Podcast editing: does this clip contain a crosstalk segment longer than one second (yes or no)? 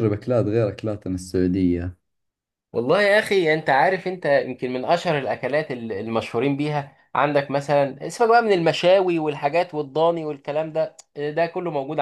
no